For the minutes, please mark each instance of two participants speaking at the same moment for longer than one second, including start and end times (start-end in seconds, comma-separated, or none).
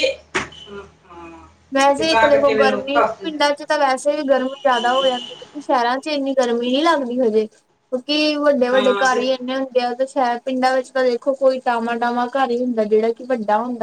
2.0-3.7